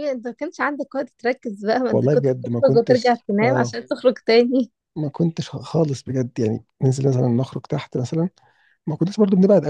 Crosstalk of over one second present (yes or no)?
yes